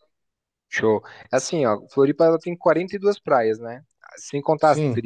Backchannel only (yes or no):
yes